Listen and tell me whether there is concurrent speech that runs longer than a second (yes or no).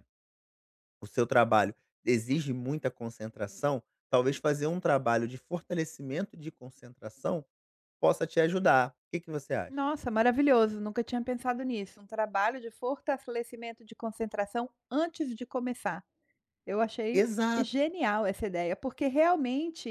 no